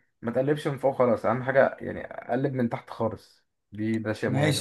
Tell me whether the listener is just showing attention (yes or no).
no